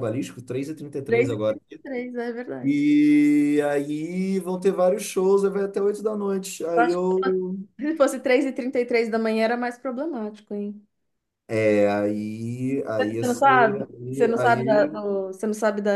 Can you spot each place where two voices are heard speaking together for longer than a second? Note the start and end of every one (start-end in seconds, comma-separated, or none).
13.0-15.1